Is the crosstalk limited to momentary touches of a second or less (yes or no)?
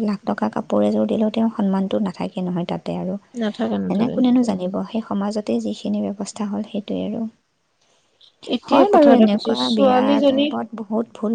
no